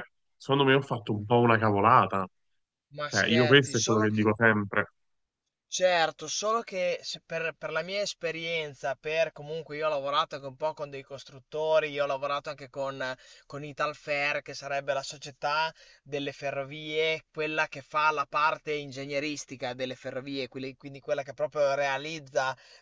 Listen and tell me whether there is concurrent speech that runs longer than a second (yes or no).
yes